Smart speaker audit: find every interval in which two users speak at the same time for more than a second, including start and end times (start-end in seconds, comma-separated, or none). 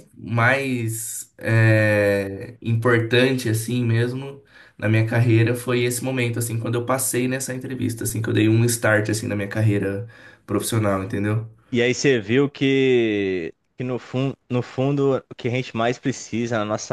none